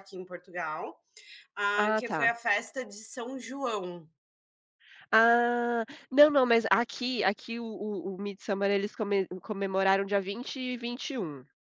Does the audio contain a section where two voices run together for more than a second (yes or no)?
no